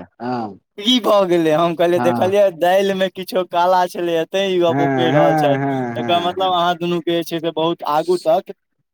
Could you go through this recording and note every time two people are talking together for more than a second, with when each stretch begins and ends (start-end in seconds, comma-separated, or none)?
4.7-6.5